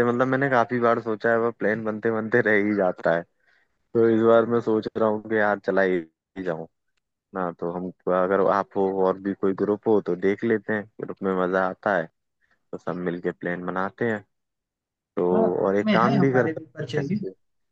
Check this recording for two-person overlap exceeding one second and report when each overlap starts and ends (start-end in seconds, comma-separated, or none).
15.7-17.1